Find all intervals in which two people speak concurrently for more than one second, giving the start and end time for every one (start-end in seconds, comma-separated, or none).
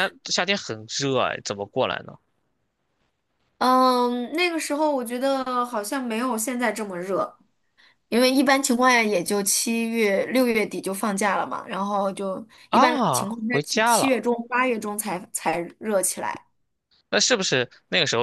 12.7-14.2